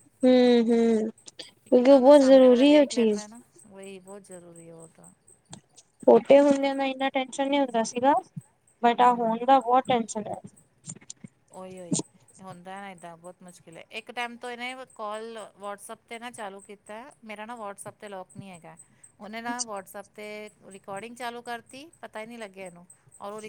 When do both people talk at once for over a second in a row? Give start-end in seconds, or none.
1.7-3.3